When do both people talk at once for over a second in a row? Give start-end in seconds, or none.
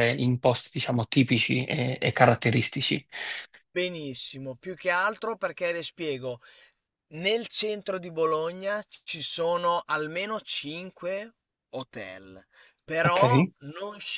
none